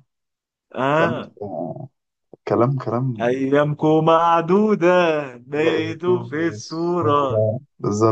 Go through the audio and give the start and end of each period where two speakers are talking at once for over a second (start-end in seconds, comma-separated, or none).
5.5-7.5